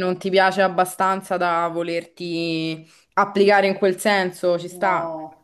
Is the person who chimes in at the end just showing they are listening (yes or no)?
no